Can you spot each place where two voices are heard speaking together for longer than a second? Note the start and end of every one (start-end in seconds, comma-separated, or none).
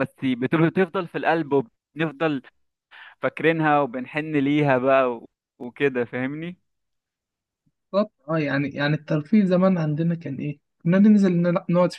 none